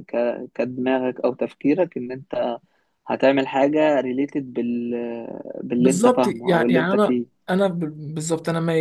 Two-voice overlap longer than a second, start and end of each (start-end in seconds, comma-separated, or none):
5.8-7.2